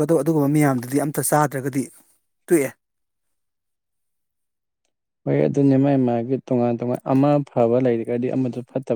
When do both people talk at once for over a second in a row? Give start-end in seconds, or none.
none